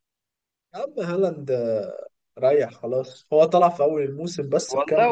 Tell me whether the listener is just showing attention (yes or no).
no